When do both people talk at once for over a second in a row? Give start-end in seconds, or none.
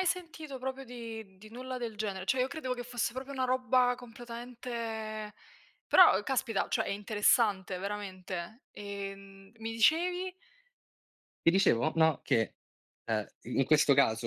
none